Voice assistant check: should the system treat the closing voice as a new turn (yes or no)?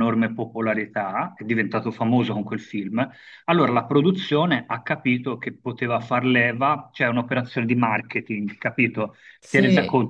no